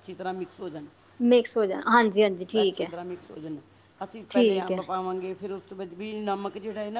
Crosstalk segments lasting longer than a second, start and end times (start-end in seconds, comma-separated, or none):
none